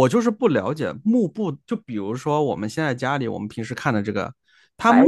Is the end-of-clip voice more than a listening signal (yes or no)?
no